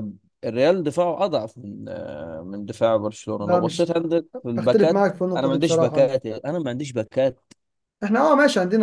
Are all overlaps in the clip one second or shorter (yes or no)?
no